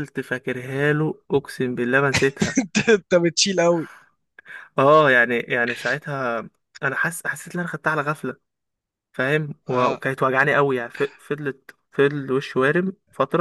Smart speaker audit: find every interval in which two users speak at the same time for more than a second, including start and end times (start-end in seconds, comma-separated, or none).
none